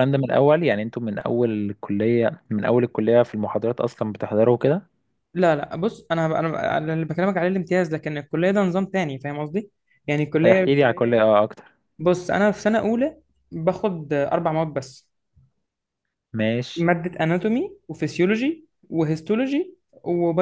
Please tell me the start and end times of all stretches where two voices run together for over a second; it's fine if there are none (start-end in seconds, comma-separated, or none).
none